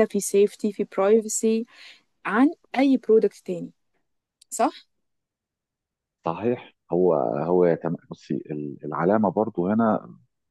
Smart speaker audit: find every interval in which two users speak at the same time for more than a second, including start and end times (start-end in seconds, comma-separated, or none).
none